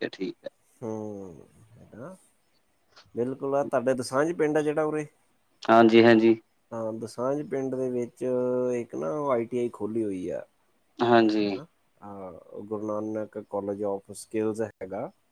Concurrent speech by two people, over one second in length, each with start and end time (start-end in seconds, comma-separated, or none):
none